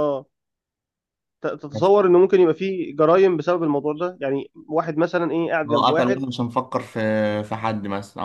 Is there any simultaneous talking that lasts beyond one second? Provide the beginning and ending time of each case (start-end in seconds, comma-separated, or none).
none